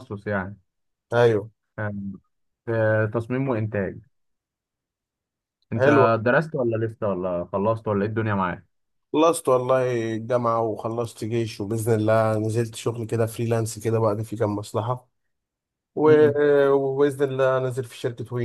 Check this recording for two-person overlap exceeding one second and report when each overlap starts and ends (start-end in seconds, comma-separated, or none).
none